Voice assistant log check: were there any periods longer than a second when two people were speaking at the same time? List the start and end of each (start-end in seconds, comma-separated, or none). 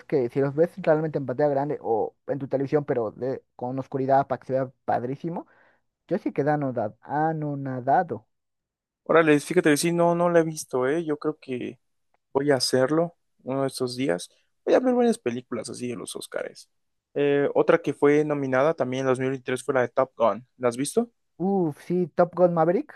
none